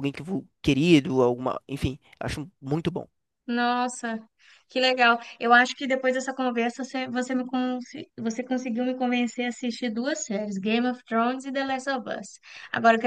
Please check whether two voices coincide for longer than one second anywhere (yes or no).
no